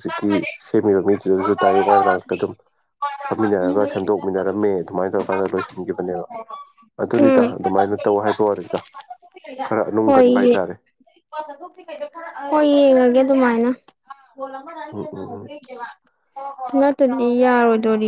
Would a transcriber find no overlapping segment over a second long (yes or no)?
yes